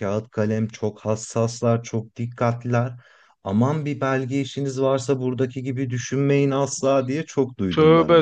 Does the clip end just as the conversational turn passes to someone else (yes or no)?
yes